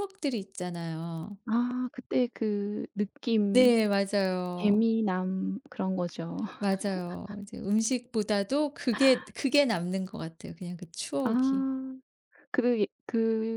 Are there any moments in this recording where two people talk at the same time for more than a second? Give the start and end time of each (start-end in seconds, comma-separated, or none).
none